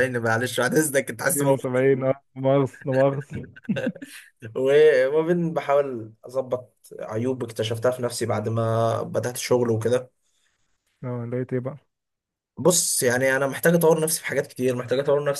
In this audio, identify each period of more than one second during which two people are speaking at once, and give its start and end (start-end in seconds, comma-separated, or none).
none